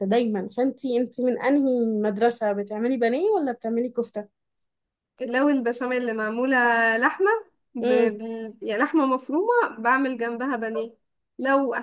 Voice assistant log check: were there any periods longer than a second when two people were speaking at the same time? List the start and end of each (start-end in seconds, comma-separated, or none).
none